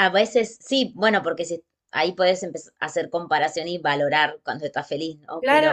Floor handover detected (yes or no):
yes